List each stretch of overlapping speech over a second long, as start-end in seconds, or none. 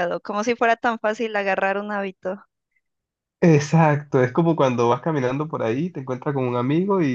none